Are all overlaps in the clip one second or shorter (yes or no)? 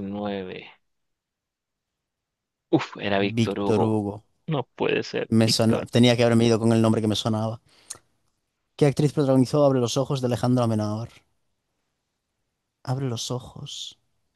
yes